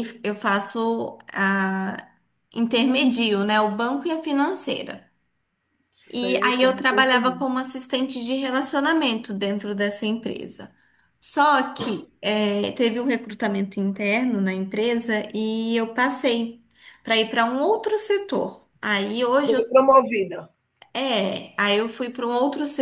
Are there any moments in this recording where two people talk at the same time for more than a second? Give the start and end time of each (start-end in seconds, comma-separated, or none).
6.2-7.4